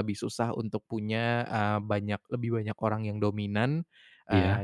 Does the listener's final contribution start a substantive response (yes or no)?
no